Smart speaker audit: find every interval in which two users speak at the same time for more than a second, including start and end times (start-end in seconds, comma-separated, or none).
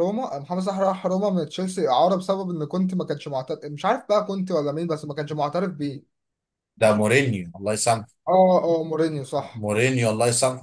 none